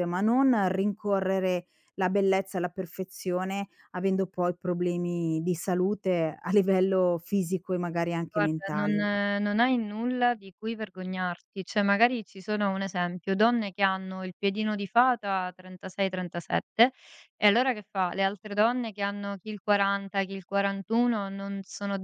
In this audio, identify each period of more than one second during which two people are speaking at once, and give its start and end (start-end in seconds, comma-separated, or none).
none